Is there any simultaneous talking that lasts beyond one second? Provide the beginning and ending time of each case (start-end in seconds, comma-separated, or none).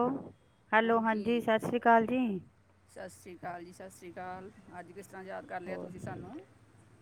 none